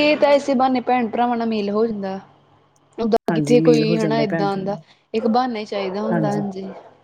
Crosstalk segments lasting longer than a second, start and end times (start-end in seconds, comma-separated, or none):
3.3-4.8